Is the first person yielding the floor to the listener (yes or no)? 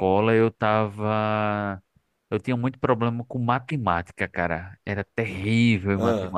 no